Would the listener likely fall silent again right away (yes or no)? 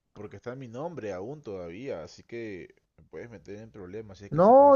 no